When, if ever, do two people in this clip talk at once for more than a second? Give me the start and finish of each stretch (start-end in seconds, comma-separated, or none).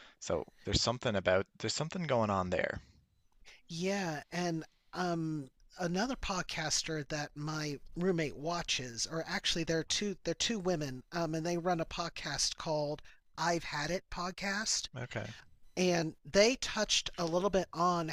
none